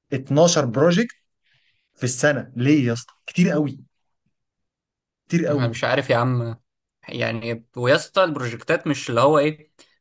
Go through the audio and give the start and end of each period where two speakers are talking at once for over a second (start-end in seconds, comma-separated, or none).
none